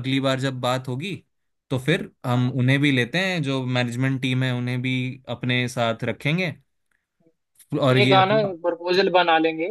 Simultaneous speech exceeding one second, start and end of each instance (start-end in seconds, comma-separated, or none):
none